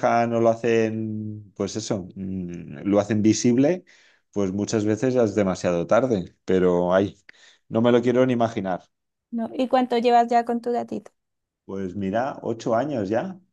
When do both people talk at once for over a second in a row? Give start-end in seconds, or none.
none